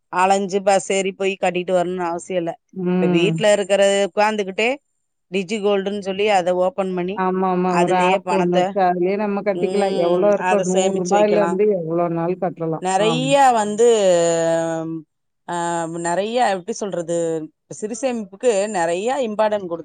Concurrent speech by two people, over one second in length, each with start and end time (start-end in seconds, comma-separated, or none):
9.6-11.5